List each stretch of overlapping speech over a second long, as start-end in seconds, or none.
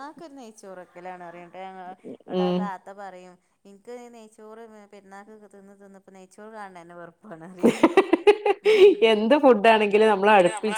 none